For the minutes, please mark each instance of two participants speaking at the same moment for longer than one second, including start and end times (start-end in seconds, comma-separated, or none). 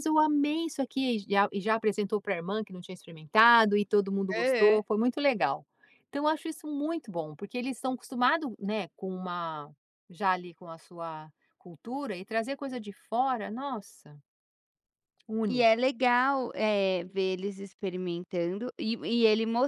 none